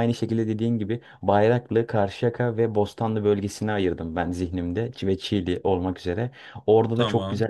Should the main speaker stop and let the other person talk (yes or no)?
no